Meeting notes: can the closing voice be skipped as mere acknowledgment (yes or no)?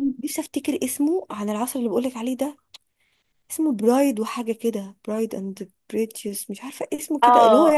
no